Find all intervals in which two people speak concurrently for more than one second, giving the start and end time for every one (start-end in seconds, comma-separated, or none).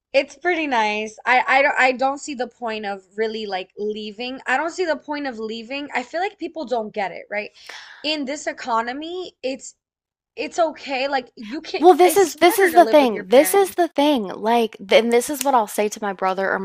11.8-13.8